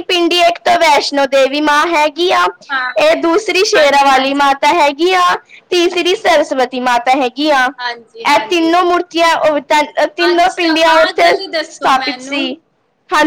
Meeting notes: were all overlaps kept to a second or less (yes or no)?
no